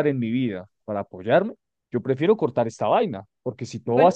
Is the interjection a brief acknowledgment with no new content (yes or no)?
yes